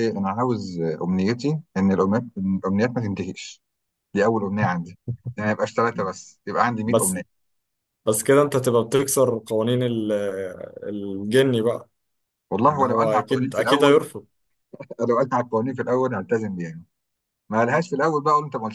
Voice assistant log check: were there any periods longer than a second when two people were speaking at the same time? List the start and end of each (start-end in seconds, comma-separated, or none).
12.7-14.0